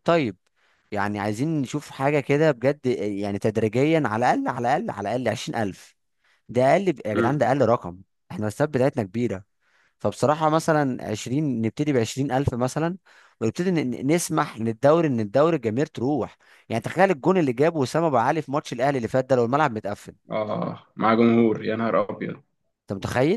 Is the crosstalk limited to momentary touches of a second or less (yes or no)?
yes